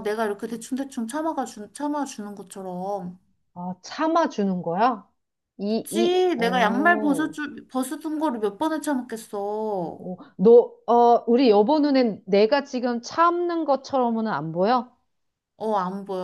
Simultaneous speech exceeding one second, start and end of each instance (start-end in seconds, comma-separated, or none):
5.7-7.3